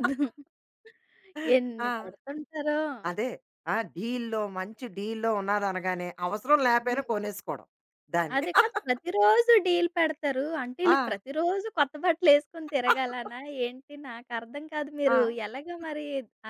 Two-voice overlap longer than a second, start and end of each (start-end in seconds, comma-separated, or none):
none